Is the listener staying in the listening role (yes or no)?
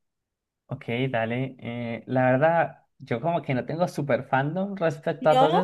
yes